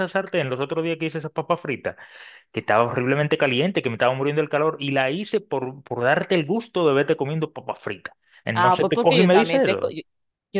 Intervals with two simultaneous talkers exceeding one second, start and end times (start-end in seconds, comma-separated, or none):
8.5-9.9